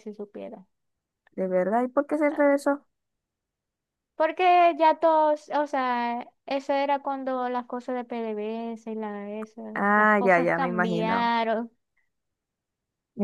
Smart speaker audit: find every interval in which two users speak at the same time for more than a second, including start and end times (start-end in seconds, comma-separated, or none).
9.8-11.4